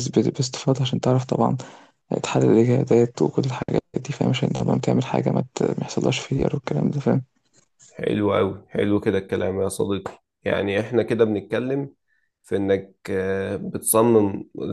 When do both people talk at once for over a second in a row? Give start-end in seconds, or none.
none